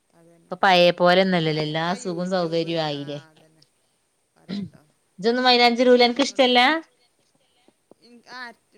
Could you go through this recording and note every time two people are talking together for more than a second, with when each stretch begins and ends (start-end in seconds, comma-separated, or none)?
1.3-3.2